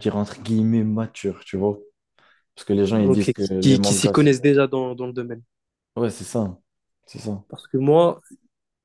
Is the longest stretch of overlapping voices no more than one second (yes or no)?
no